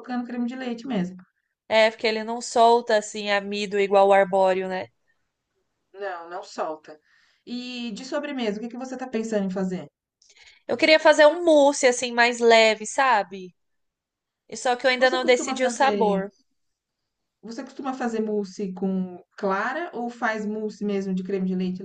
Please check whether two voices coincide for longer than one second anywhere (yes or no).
yes